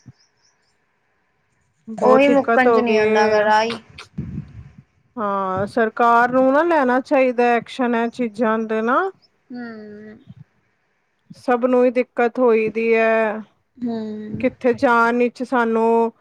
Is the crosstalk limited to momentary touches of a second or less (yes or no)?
no